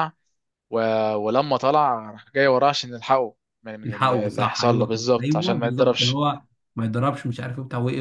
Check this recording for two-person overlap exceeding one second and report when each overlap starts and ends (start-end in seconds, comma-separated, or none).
3.8-6.2